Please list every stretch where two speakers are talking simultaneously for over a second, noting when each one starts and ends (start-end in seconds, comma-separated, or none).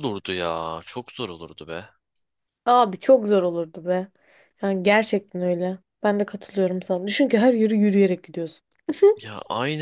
none